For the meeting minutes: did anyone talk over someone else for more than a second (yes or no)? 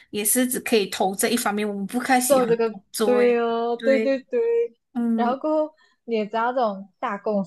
yes